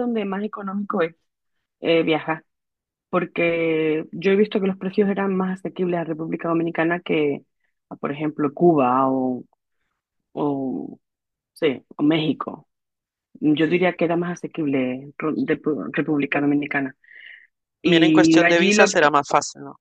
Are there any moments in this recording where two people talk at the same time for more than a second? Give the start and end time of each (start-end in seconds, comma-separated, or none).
17.8-19.1